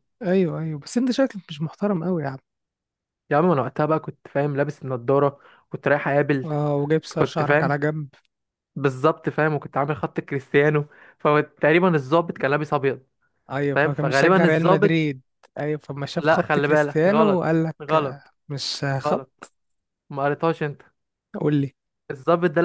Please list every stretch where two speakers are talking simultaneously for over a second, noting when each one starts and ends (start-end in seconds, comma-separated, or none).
13.7-15.1, 16.2-18.3